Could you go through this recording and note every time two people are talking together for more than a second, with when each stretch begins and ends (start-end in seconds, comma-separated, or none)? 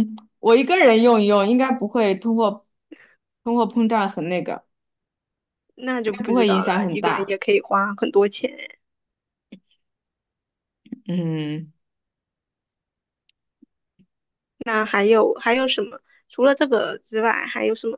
6.0-7.3